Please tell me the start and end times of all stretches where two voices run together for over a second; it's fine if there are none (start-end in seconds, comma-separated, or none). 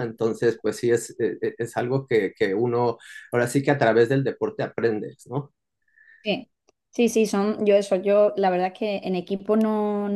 none